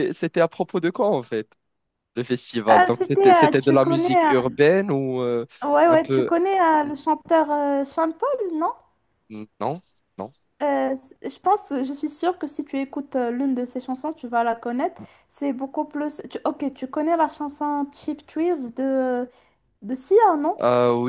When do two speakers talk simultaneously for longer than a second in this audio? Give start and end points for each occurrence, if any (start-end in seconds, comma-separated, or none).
2.7-4.1